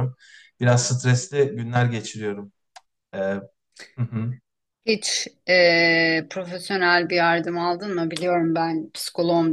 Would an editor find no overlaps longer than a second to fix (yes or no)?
yes